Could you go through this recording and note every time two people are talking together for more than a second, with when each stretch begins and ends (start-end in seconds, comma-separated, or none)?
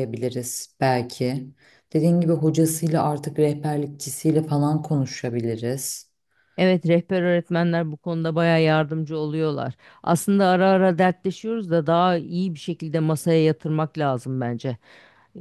none